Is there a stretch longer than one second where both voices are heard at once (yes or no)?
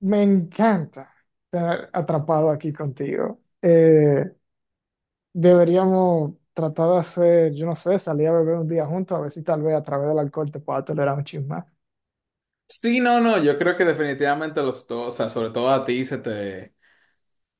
no